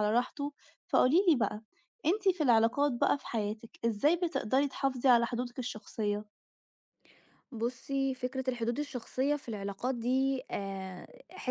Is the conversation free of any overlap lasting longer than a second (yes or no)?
yes